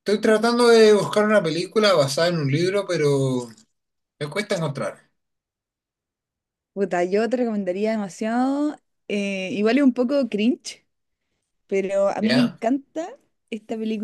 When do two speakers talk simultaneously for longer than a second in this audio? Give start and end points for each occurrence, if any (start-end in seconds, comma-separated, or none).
none